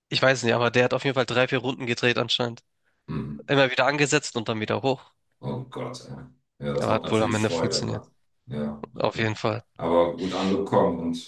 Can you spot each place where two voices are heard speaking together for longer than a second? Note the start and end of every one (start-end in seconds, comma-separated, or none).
6.8-8.0